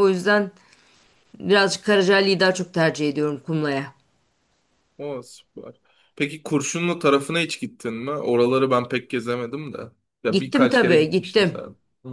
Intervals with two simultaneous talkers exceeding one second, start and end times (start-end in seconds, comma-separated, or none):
10.3-11.6